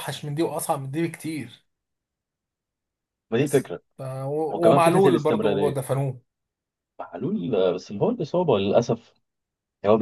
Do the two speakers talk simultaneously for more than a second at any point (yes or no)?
yes